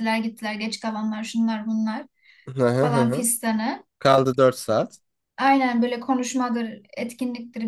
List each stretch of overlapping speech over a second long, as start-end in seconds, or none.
none